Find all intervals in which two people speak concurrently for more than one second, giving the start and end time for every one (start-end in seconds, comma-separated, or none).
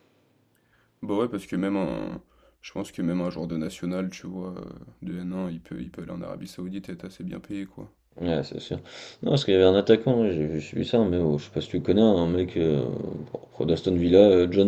none